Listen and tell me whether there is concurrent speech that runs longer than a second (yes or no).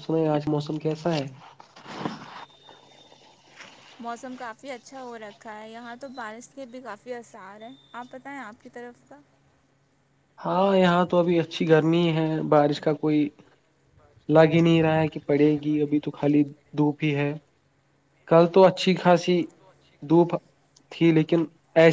no